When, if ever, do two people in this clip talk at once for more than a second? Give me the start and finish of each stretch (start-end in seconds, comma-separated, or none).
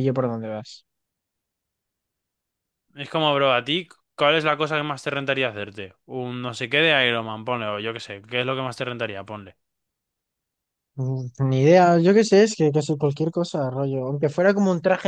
none